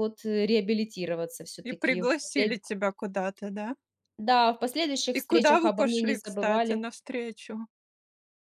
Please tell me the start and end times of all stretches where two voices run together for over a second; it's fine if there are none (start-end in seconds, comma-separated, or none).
5.1-6.8